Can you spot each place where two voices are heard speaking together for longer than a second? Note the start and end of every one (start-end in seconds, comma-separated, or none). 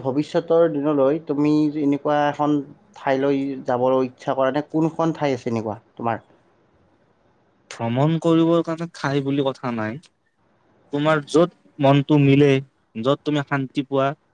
none